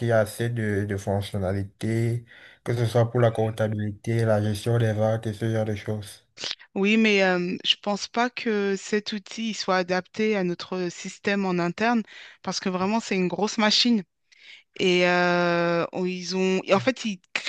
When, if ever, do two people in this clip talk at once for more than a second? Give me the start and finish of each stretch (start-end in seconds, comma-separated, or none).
none